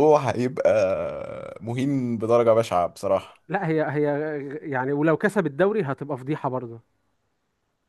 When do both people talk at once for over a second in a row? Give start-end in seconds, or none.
none